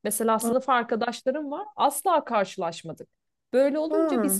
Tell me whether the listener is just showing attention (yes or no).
yes